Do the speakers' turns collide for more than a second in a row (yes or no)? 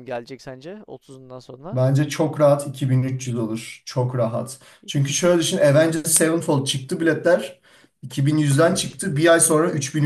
no